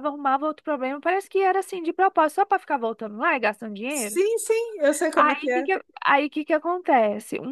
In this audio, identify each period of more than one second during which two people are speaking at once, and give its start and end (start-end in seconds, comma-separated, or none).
none